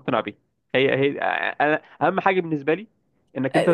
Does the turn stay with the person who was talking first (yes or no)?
no